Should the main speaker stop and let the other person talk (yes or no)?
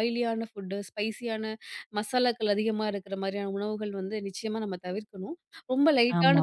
no